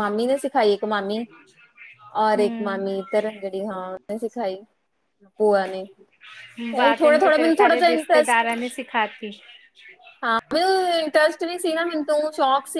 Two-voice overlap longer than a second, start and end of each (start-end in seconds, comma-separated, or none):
6.8-8.4